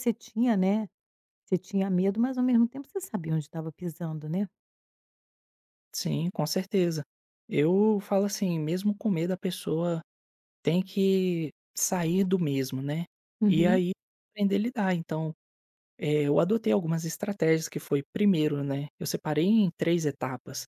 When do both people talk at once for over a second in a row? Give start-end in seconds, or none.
none